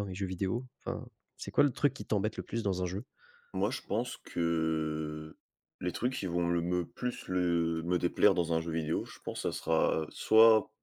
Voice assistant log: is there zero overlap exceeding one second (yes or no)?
yes